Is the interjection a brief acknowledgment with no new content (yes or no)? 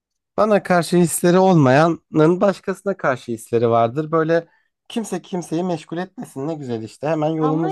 no